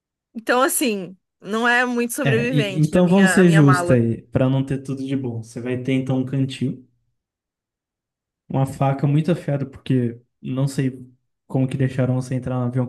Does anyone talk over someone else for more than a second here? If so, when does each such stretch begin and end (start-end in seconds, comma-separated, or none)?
2.2-4.0